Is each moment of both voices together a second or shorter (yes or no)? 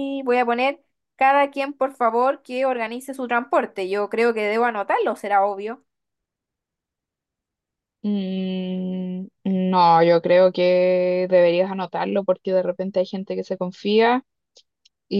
yes